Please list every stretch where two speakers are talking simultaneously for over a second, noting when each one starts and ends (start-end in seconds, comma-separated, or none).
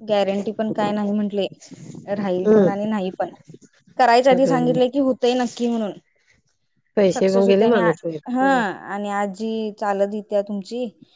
7.1-8.6